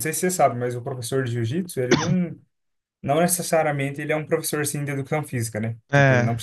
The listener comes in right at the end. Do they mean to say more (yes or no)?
no